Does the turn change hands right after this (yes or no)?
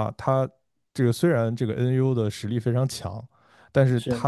no